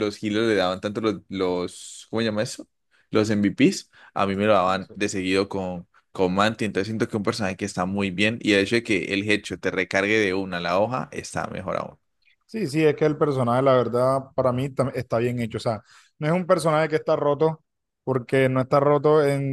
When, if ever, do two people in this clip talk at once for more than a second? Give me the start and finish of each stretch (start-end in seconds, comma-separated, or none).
none